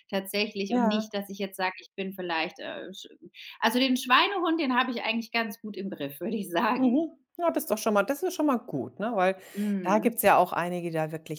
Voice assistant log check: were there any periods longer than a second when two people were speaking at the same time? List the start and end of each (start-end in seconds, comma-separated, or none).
none